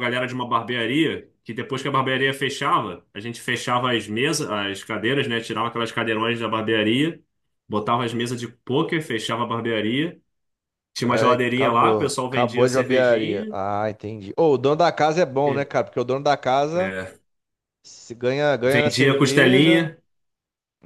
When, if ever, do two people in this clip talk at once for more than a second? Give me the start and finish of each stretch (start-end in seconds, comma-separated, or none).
11.1-13.5, 18.7-19.9